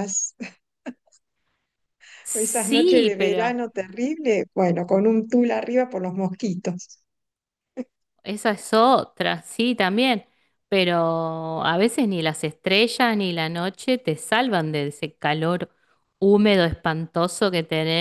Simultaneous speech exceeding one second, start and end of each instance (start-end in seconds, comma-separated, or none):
2.3-3.6